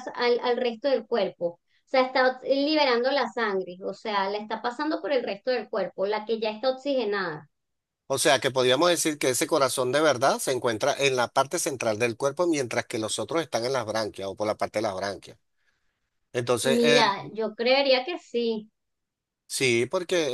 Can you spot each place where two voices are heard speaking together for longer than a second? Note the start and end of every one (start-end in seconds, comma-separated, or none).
none